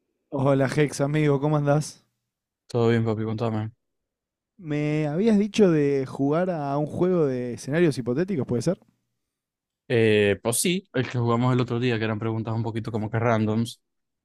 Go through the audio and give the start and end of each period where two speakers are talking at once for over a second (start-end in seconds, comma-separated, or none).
none